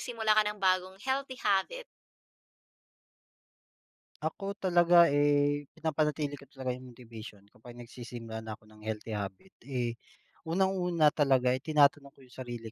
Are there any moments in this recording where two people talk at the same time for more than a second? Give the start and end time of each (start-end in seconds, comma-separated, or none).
none